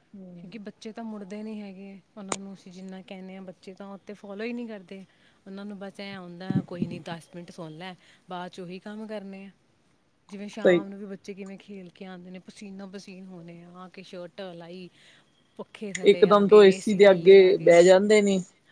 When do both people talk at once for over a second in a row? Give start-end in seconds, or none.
16.1-17.8